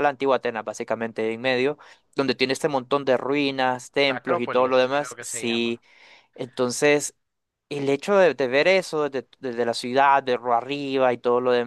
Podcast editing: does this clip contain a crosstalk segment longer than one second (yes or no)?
yes